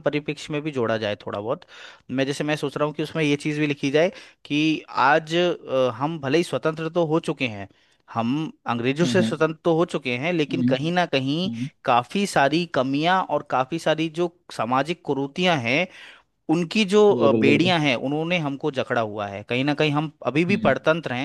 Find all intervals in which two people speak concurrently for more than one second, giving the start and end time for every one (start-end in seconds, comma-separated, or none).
none